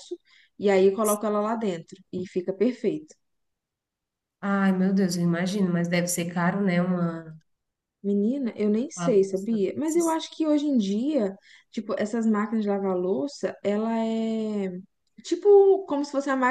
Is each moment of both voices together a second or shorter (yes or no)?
no